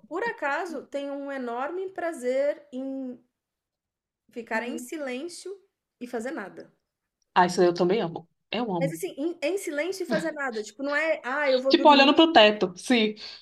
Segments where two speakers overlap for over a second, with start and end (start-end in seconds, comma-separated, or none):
none